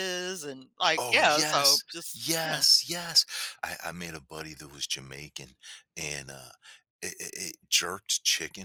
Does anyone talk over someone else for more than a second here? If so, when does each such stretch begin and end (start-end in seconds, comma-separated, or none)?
1.0-2.6